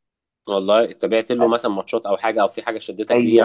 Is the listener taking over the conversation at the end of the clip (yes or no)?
yes